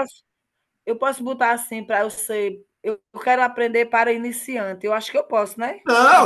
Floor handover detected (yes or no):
yes